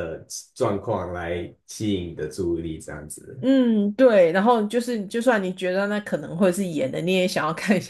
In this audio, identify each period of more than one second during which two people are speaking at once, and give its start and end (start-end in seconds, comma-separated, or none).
none